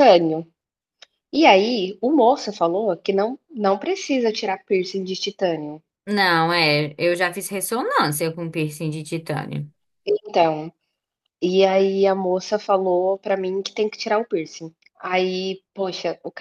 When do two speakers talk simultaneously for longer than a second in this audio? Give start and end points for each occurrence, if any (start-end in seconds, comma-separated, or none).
none